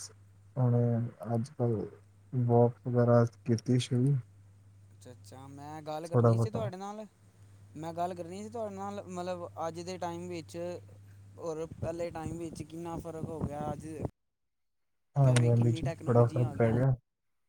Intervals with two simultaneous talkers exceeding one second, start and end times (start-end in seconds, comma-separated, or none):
15.2-16.8